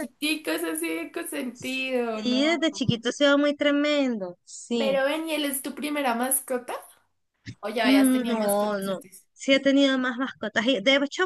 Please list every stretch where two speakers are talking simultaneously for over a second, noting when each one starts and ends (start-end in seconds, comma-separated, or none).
7.8-9.2